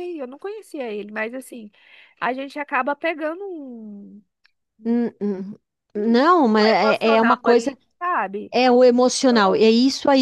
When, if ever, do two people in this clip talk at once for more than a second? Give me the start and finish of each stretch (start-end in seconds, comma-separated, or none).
6.0-7.8